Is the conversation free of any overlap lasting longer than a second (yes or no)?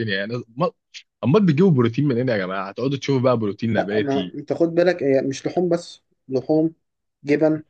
yes